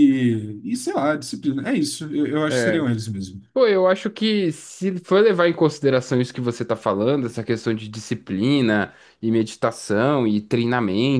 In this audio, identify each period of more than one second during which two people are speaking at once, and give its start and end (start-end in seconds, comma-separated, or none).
none